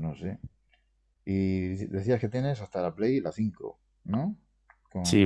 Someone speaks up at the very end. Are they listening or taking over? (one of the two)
taking over